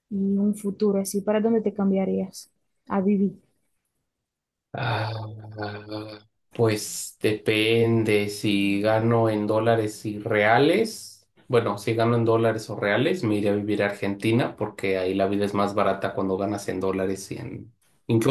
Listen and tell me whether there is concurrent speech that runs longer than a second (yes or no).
no